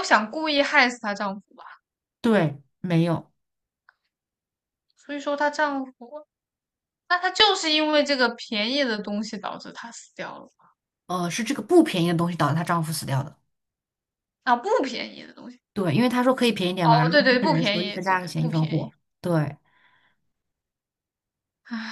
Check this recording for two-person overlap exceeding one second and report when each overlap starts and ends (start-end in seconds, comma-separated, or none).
16.8-18.9